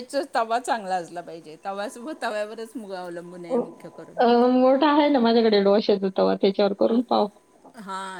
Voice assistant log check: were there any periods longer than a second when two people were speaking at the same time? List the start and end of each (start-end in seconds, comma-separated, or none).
none